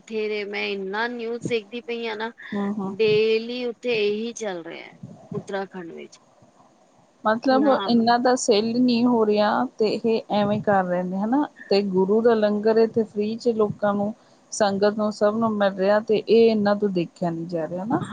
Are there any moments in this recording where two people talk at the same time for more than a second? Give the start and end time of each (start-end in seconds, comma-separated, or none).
none